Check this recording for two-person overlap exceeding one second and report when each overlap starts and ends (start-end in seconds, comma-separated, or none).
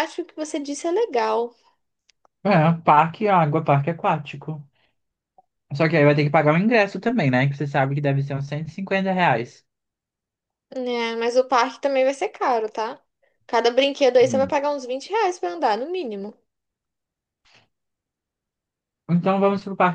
none